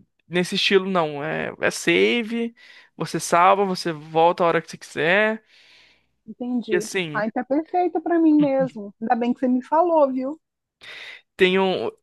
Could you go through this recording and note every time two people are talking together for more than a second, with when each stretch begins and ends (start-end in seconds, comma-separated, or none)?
none